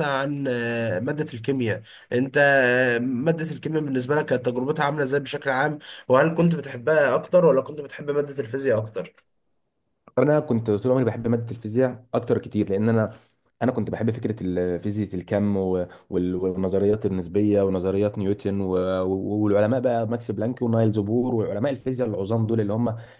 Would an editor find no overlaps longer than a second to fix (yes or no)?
yes